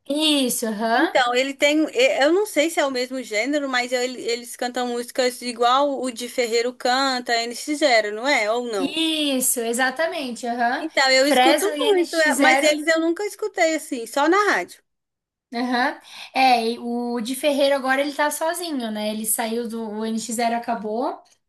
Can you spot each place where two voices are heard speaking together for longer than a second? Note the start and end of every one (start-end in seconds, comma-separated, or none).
10.8-12.8